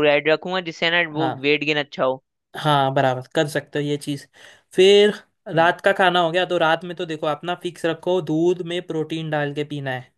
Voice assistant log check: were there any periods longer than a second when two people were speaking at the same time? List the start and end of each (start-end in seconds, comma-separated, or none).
none